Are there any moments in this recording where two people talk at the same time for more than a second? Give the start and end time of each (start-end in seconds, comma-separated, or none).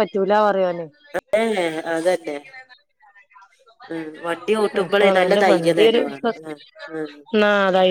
none